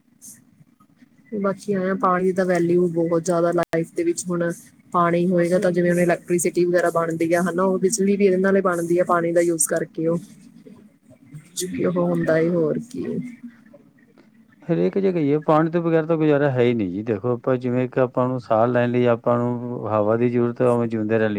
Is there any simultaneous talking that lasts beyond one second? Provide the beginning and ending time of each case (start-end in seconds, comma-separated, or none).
none